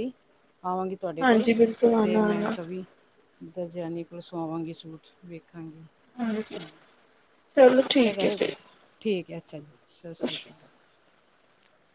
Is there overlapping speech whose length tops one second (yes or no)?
yes